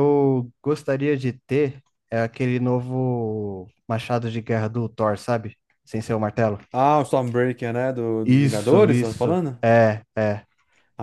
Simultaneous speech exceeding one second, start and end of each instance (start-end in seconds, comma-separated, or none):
8.2-9.6